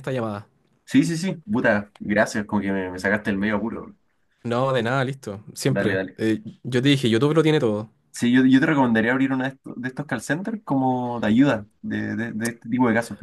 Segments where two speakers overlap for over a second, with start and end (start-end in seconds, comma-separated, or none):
none